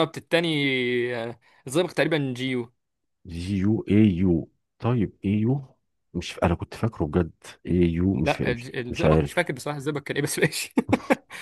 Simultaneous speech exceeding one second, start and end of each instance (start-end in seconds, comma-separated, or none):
8.2-9.5